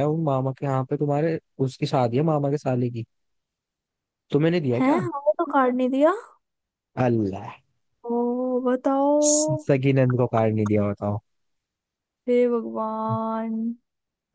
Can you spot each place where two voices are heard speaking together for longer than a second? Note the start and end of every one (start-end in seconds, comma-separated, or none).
none